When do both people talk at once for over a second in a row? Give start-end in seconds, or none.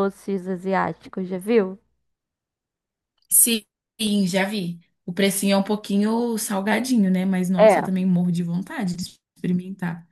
none